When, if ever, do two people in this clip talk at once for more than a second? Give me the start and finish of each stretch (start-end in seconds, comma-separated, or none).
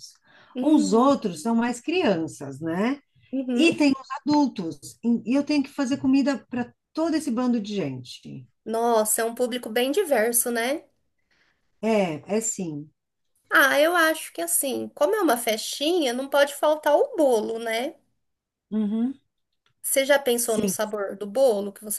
none